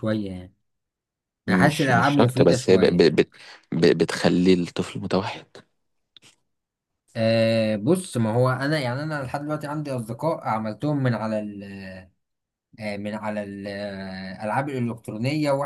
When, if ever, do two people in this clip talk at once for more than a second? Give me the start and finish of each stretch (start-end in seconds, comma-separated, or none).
1.5-3.1